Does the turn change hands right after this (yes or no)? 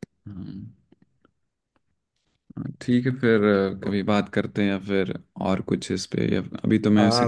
yes